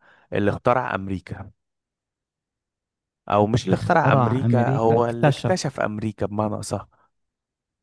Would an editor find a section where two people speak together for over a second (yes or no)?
yes